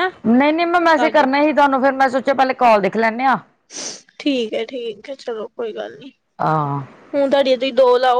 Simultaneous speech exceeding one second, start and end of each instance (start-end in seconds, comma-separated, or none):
none